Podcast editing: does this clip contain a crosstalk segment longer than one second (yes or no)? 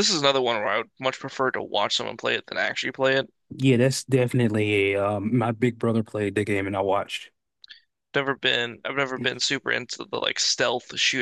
no